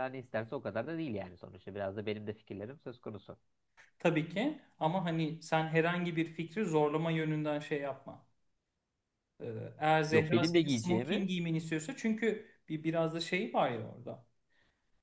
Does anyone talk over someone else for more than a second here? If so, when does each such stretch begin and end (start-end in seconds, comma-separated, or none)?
10.1-11.3